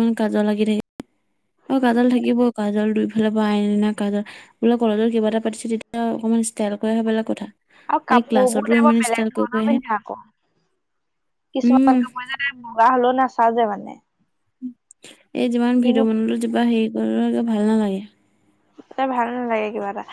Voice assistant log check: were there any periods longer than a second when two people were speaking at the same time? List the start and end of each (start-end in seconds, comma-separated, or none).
8.2-9.8